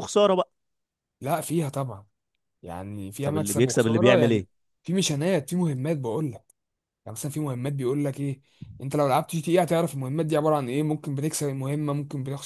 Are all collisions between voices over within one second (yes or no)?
no